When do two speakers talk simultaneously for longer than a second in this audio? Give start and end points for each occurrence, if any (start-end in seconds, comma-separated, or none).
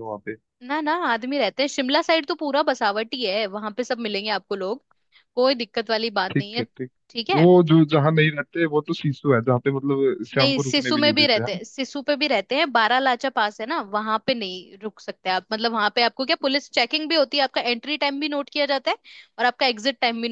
10.3-11.6